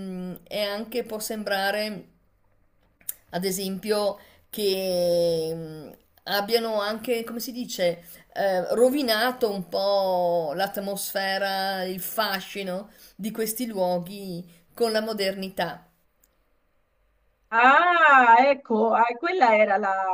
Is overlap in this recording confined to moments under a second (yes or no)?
yes